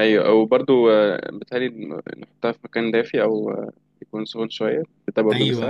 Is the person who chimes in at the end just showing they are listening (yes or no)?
no